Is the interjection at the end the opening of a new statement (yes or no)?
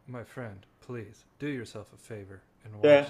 yes